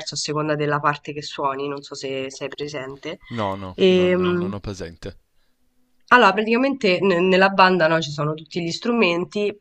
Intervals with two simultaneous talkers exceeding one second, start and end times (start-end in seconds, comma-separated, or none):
none